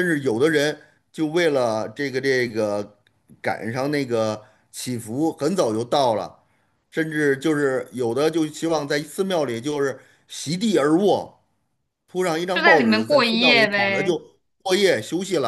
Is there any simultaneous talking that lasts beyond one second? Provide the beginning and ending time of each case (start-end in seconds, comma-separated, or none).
12.5-14.2